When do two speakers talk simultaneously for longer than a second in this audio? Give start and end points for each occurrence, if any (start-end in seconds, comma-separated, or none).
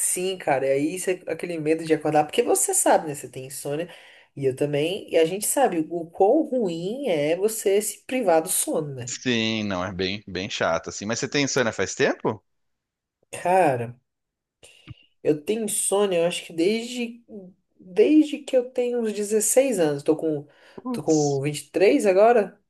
none